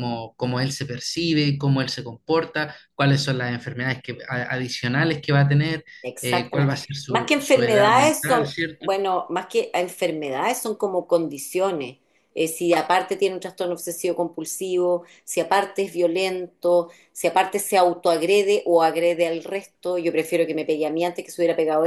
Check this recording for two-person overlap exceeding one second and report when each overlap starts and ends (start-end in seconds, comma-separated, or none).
6.0-8.9